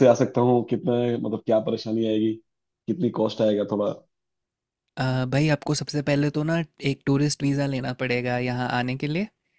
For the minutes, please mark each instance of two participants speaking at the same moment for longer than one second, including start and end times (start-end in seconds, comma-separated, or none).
none